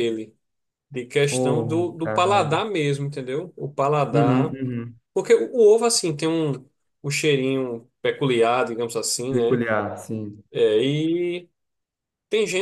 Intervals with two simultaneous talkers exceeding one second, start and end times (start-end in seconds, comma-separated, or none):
1.3-2.6